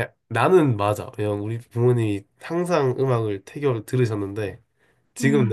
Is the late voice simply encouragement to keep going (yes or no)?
yes